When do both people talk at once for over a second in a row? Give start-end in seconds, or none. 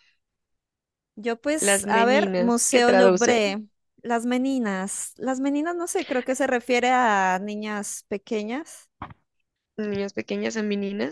1.6-3.4